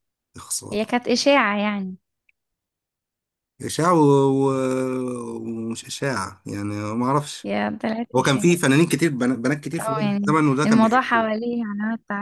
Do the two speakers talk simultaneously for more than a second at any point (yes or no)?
yes